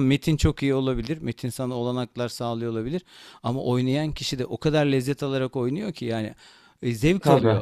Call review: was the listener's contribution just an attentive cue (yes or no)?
yes